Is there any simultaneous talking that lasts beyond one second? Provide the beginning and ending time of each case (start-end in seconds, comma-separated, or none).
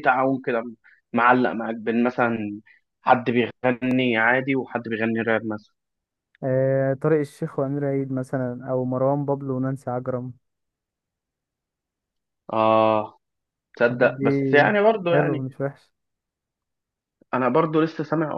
none